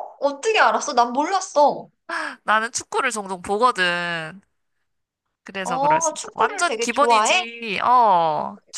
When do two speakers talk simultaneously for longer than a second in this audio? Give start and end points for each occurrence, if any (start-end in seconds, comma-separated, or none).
5.6-7.5